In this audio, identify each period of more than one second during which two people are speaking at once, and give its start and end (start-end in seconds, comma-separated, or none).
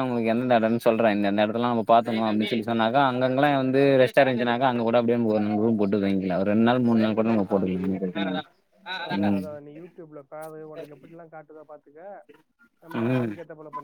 none